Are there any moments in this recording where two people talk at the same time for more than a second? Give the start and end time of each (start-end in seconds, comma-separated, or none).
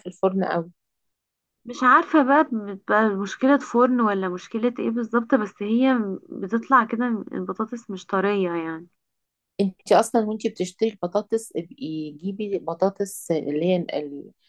none